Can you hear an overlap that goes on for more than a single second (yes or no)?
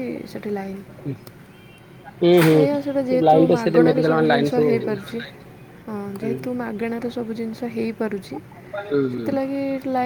yes